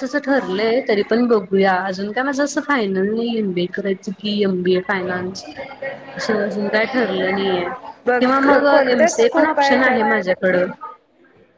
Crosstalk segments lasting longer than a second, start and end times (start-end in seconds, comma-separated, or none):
8.2-10.0